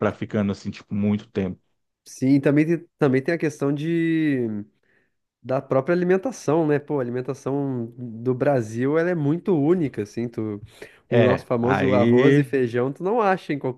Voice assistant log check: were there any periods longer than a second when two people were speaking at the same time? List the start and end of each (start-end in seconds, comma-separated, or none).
11.1-12.5